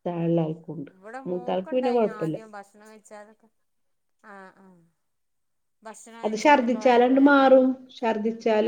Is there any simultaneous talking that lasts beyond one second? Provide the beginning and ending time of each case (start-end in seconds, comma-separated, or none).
6.2-7.7